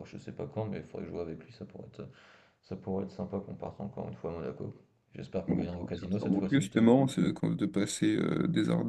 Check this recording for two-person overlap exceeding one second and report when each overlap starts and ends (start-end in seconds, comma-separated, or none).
5.5-6.9